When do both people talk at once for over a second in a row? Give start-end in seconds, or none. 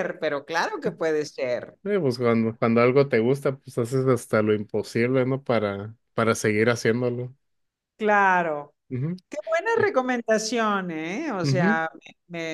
none